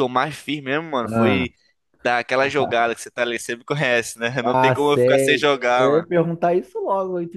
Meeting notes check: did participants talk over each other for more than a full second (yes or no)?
yes